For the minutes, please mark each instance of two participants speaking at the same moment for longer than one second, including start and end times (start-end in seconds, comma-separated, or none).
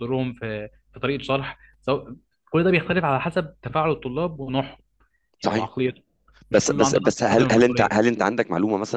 6.5-8.1